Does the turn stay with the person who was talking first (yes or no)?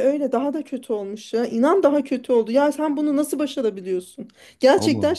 yes